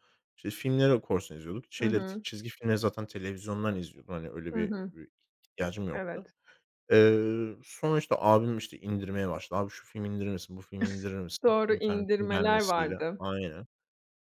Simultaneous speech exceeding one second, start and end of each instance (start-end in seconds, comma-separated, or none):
11.4-13.2